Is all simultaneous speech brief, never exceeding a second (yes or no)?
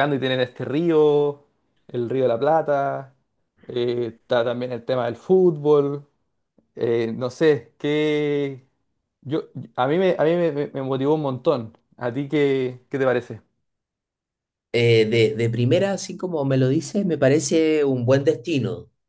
yes